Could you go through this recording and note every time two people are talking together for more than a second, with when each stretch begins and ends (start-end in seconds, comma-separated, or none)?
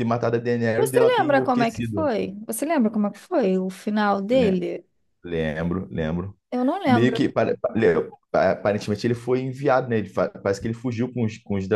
0.8-2.1